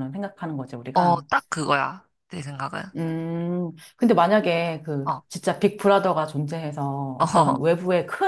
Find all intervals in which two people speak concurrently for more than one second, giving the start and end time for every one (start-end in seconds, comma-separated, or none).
none